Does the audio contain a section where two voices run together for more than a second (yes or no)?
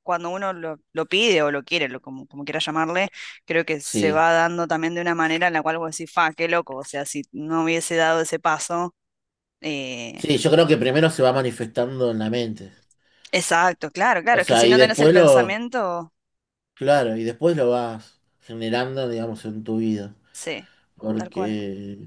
yes